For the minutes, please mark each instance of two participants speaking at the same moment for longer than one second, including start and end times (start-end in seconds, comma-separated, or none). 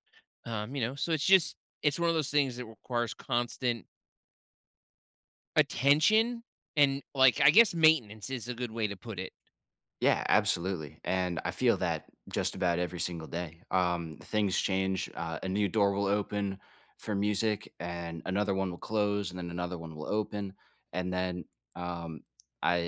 none